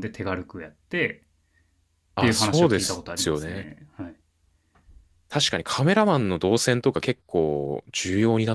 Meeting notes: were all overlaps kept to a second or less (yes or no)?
no